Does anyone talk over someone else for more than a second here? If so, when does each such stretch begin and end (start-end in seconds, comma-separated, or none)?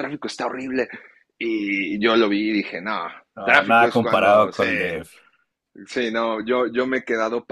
3.4-5.0